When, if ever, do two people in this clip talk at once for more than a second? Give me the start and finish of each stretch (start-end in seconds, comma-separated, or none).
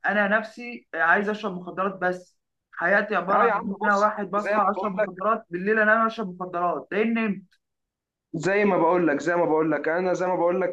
3.3-5.1